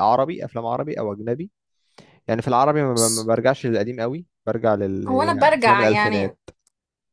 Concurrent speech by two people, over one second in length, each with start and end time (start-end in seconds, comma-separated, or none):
5.1-6.3